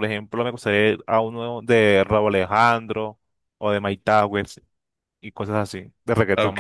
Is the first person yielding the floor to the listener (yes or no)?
yes